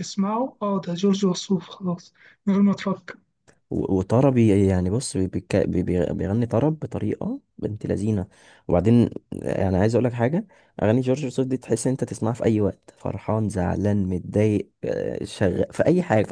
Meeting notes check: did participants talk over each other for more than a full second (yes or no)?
no